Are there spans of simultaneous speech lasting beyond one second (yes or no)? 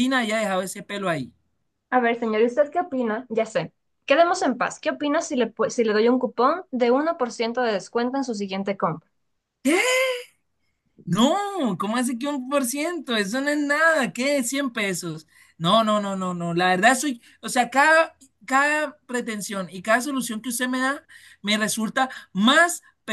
no